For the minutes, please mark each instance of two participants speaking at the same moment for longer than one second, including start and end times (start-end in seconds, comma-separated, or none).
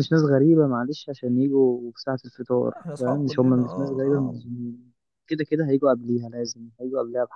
2.6-4.4